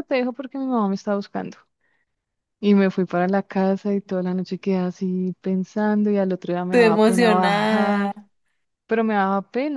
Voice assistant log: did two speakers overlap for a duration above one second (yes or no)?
yes